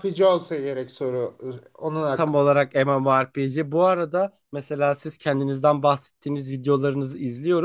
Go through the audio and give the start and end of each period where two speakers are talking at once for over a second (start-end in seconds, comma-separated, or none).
none